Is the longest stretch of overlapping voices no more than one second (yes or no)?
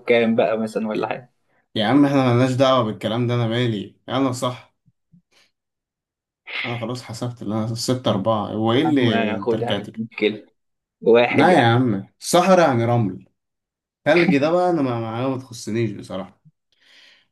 no